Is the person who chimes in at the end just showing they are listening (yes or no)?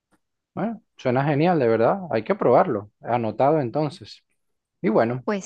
yes